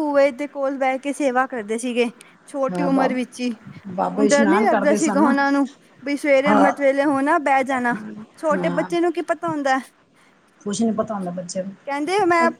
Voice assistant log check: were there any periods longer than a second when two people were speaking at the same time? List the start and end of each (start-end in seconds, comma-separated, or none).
4.1-5.3